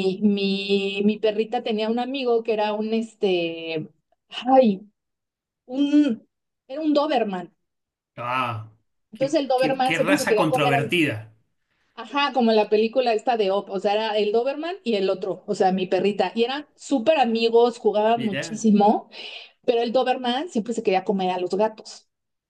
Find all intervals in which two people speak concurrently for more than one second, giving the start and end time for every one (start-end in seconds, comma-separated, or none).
9.1-10.8